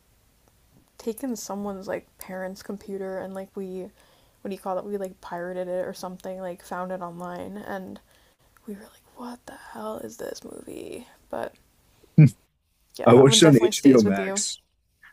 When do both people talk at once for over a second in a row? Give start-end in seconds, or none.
13.1-14.4